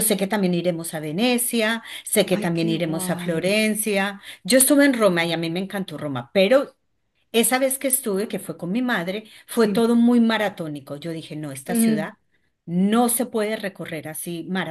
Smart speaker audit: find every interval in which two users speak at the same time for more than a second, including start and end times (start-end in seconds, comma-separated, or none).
2.3-3.5